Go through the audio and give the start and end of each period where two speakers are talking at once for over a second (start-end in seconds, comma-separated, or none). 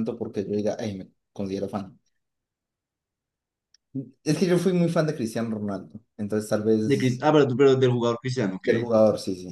none